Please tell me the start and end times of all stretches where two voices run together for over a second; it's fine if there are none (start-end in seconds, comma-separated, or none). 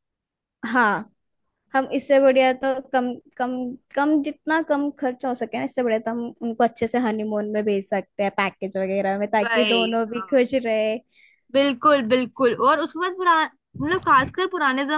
none